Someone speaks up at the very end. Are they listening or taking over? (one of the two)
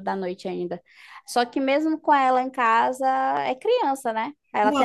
taking over